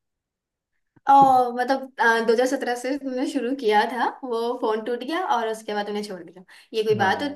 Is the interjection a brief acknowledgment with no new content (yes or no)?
yes